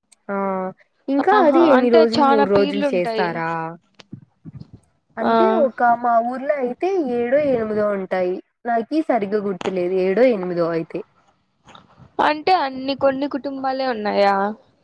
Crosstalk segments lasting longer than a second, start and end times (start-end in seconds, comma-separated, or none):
1.4-3.3